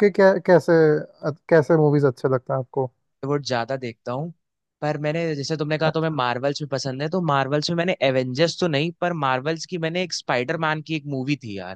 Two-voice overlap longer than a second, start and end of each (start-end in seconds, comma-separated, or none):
none